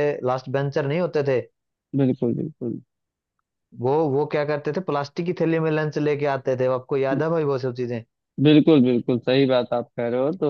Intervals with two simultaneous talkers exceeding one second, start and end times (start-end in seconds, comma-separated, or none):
none